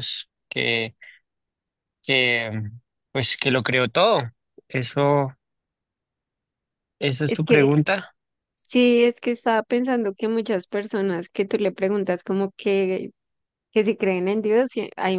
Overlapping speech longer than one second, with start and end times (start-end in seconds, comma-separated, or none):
none